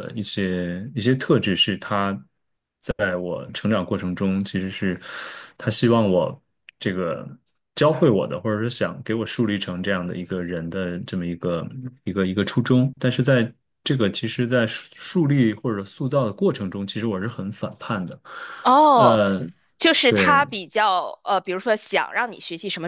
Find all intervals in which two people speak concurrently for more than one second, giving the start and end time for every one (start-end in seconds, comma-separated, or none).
none